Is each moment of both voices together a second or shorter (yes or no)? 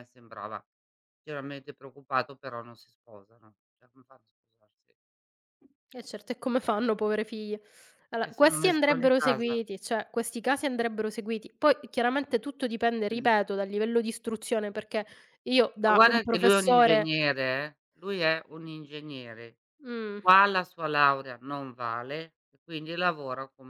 no